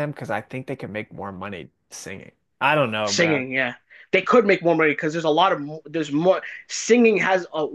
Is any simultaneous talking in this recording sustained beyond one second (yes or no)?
no